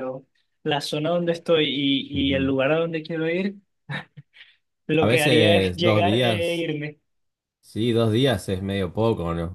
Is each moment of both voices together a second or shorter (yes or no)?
no